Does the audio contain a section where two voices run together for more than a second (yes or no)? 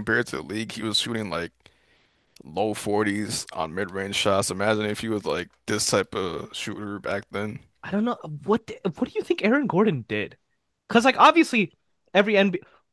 no